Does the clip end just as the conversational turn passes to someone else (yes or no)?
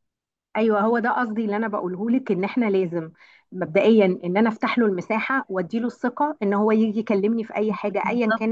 yes